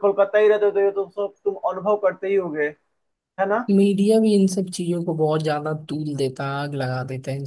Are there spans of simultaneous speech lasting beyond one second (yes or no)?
no